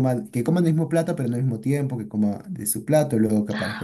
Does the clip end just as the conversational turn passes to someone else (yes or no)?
no